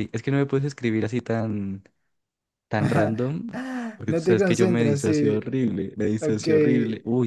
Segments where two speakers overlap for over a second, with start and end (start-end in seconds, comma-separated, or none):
4.1-5.4